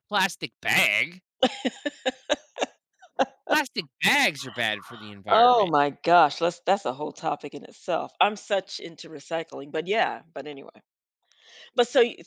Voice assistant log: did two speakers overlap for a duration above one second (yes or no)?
no